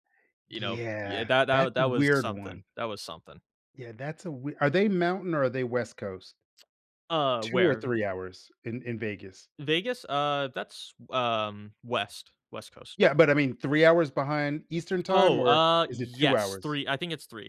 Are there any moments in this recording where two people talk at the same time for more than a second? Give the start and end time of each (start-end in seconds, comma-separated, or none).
0.6-2.6, 15.1-16.8